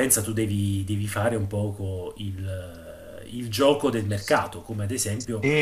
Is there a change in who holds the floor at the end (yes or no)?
no